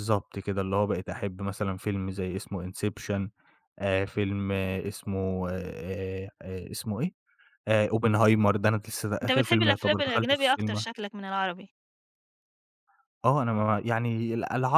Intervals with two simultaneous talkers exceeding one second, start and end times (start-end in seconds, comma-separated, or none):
9.2-10.8